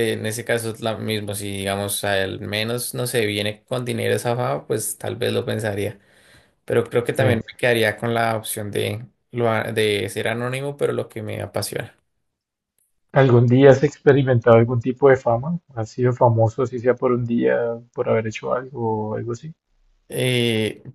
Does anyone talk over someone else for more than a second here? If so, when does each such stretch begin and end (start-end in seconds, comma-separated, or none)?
none